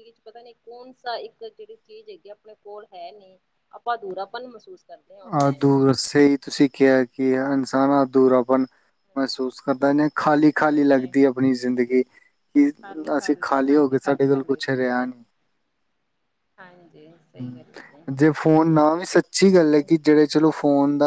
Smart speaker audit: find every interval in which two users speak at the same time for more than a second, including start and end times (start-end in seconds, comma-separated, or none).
13.7-15.1